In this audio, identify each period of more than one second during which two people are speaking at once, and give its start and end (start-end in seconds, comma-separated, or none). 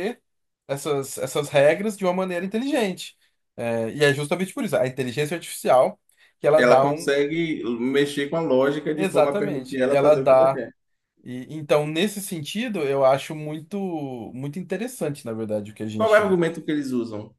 8.9-10.6